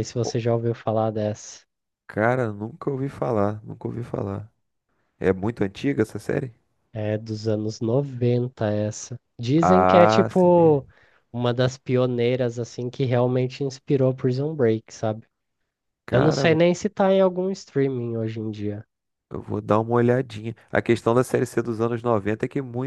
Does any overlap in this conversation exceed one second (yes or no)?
yes